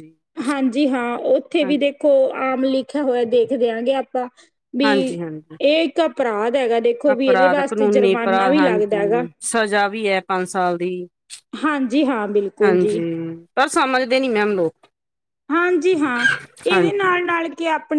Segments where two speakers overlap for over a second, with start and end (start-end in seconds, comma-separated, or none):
7.1-9.2